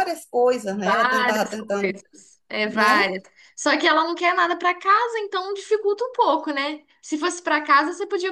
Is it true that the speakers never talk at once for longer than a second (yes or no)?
no